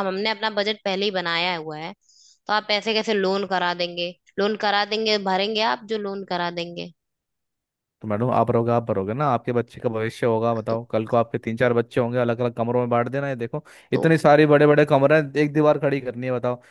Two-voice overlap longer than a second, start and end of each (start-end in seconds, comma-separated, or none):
none